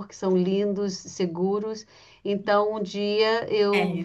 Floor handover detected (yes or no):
no